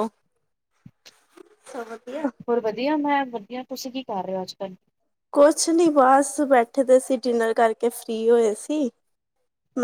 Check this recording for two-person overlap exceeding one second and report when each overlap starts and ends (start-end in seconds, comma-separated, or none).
none